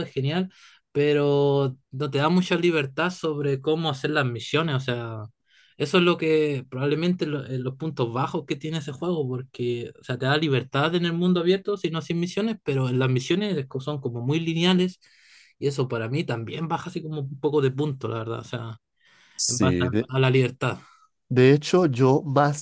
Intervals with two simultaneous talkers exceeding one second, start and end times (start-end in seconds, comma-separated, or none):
none